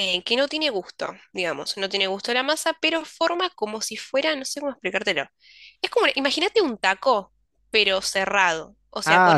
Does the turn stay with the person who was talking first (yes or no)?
yes